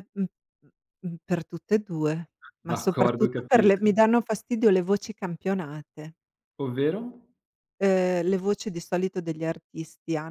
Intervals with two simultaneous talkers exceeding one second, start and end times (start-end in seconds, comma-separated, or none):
2.7-4.0